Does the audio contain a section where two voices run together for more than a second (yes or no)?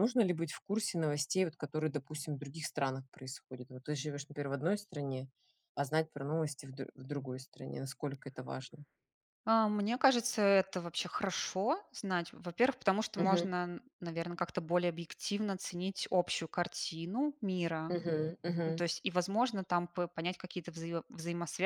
no